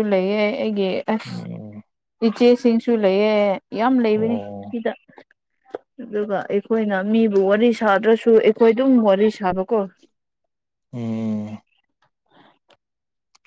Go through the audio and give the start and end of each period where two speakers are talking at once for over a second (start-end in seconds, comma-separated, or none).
none